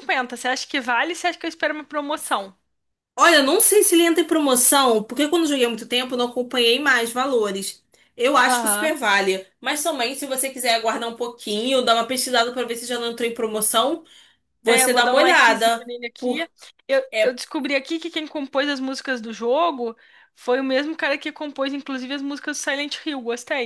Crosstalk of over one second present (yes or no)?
yes